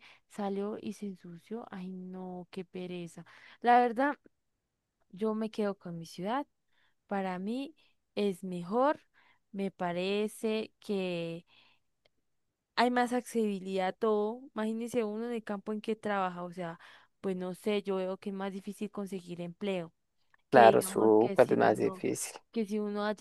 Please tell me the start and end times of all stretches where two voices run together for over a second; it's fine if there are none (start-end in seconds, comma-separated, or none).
20.5-22.0